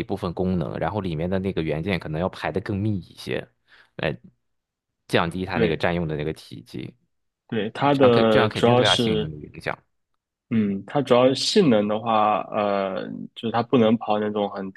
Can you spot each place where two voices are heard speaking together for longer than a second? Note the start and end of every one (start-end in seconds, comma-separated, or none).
7.8-9.3